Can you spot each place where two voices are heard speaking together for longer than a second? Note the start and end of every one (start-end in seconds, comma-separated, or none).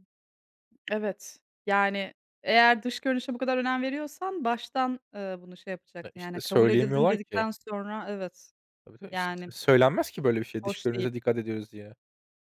6.0-7.5